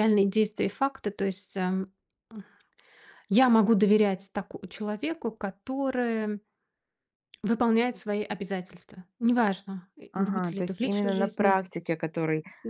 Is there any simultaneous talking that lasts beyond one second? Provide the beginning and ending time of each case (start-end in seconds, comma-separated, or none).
10.1-11.6